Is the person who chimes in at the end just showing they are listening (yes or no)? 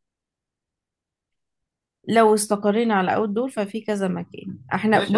no